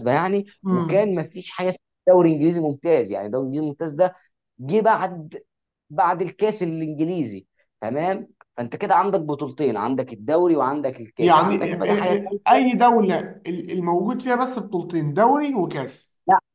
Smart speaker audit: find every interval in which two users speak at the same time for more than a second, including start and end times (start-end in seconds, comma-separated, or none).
11.2-12.4